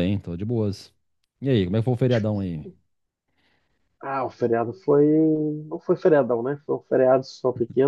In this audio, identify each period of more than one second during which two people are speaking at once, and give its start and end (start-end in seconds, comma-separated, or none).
none